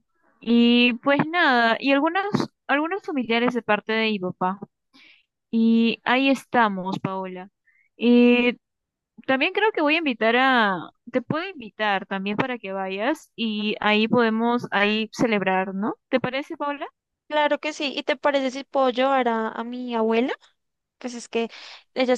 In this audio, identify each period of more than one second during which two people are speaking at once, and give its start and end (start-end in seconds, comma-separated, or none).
none